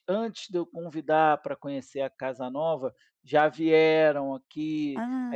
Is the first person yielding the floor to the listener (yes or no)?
no